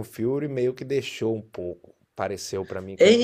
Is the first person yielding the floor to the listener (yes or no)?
yes